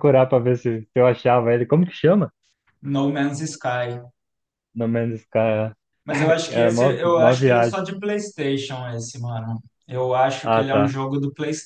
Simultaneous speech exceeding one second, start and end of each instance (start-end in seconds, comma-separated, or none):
6.2-7.8